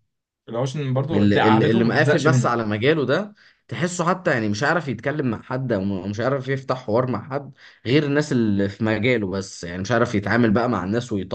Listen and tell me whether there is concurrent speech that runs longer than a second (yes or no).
yes